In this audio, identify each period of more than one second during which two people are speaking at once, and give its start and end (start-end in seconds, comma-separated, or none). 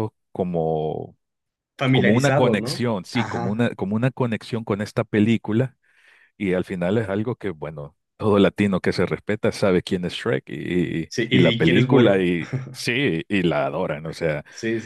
1.9-3.6, 11.1-12.3